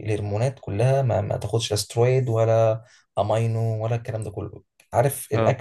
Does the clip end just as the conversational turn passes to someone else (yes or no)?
no